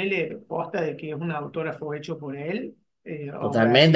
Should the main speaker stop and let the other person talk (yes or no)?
yes